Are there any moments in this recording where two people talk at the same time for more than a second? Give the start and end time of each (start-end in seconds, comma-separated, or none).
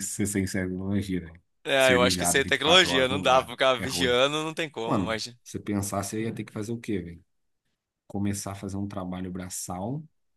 1.6-4.2